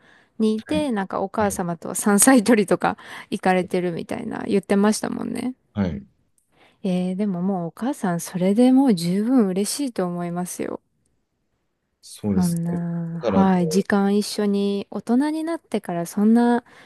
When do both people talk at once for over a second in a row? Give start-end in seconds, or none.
12.3-13.8